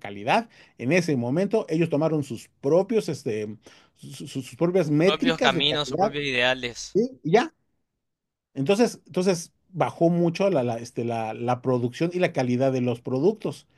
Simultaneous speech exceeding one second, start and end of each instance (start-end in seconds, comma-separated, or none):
4.8-6.1